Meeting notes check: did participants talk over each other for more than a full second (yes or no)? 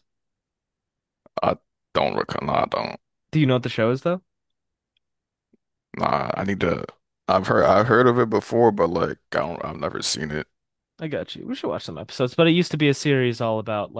no